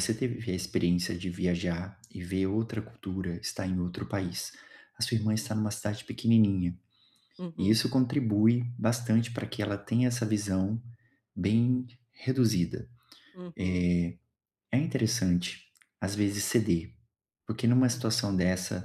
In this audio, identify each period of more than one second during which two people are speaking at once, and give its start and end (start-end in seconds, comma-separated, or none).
none